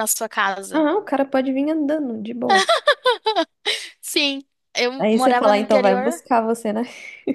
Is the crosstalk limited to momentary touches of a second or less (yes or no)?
no